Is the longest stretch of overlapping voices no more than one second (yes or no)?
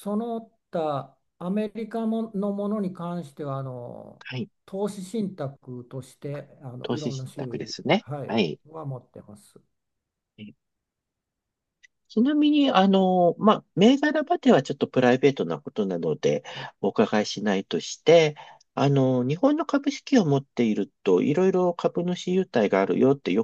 no